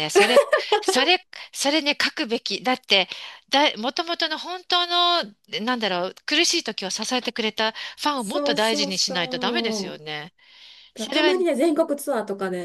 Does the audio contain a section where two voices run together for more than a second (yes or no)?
yes